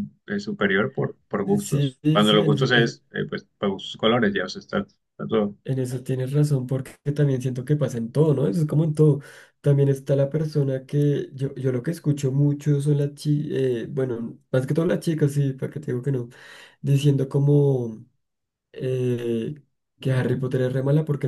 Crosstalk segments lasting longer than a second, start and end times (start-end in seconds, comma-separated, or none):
1.6-2.9